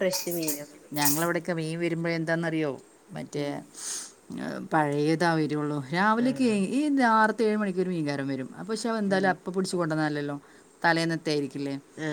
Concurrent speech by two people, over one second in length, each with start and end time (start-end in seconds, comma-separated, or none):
none